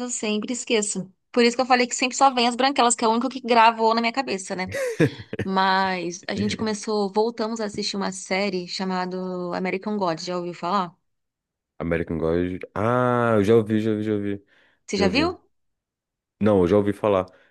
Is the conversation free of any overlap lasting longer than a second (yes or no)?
yes